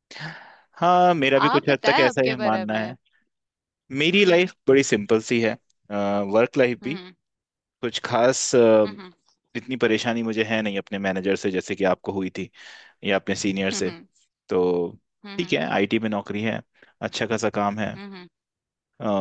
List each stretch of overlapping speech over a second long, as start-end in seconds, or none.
1.5-2.9